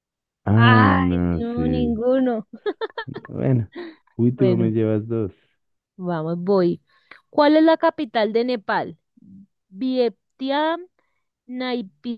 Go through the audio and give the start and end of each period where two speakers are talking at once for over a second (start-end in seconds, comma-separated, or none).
0.6-2.0